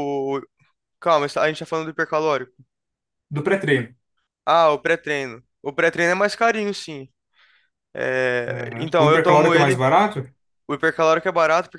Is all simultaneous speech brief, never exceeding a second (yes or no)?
no